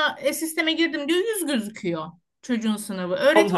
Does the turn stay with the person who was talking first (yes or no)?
yes